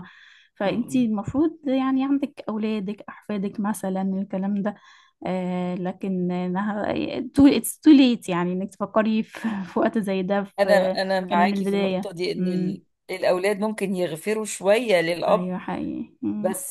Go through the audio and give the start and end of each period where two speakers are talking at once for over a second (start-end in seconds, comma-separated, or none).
10.6-12.8